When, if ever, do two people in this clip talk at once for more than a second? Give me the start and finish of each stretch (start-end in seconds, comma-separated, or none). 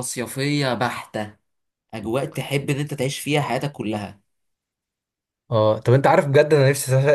none